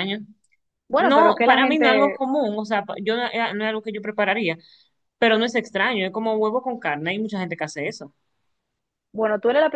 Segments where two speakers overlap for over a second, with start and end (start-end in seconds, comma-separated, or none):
1.0-2.2